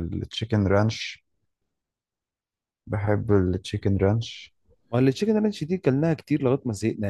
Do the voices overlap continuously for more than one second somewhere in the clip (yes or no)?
no